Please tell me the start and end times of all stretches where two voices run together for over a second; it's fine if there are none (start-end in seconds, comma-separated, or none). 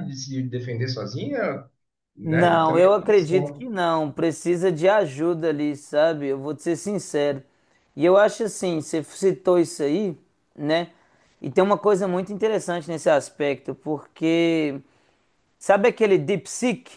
2.2-3.7